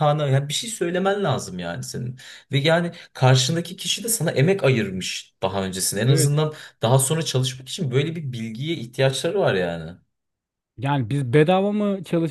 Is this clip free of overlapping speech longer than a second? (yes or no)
yes